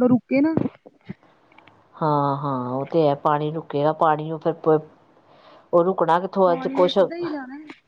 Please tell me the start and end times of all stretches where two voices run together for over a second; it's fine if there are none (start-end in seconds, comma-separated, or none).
none